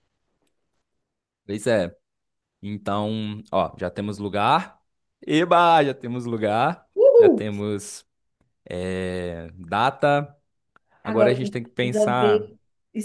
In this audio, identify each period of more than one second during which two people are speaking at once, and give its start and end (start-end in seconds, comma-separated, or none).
11.0-12.5